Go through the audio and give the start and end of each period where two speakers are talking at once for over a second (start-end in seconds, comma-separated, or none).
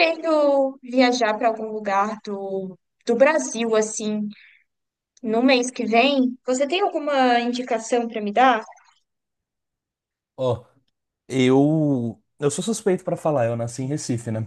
none